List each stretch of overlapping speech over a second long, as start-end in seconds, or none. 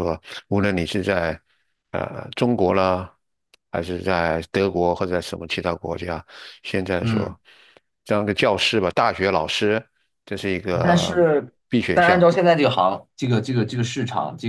none